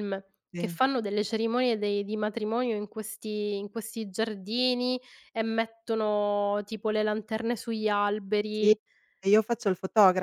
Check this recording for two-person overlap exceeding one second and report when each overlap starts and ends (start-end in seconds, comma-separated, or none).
none